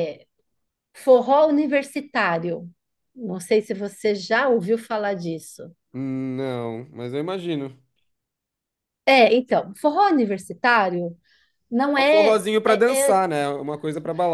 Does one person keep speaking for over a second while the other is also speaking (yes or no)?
yes